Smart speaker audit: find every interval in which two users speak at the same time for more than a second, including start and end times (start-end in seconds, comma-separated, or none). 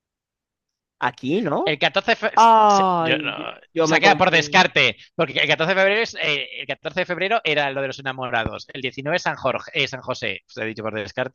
3.0-4.6